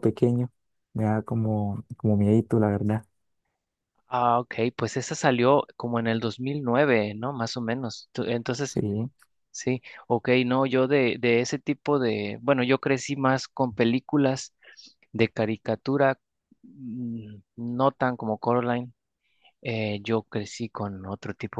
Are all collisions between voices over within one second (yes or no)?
yes